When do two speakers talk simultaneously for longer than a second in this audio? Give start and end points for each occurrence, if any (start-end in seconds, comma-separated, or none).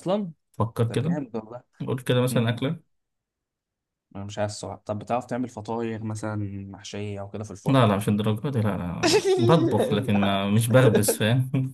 9.0-10.4